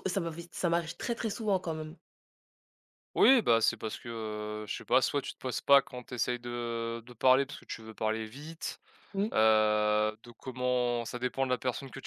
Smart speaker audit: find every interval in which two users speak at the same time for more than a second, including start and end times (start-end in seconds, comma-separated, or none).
none